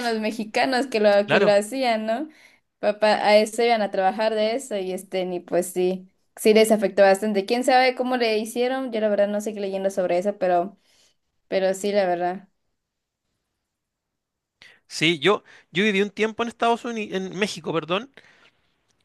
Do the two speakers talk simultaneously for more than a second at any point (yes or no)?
no